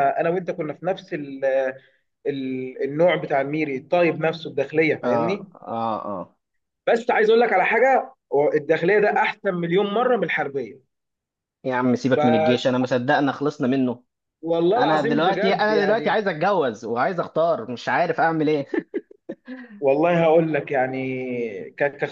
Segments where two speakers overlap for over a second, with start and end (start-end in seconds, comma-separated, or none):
14.8-16.2